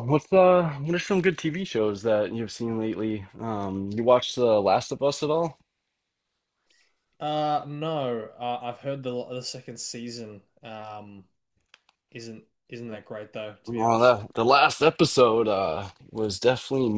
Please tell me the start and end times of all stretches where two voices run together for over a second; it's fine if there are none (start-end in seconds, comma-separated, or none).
none